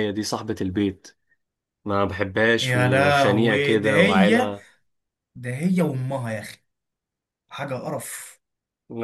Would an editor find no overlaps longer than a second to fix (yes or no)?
no